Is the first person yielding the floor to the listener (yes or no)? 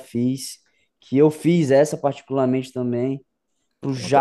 no